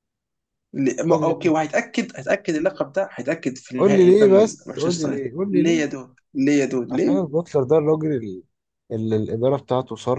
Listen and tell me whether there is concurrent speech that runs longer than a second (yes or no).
yes